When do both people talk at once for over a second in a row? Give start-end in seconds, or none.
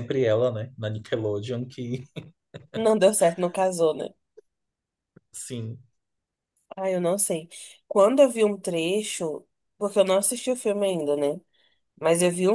none